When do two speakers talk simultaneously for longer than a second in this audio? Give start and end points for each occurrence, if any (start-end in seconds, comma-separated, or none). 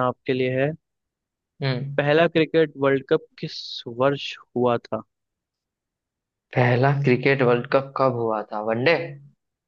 none